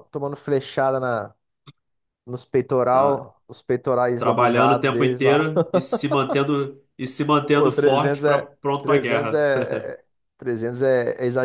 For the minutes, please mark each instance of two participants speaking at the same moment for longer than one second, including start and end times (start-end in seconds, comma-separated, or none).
4.2-5.5, 7.5-9.5